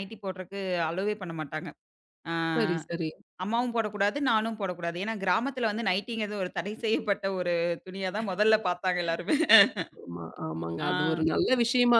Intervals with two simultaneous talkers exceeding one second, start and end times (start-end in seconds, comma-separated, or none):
none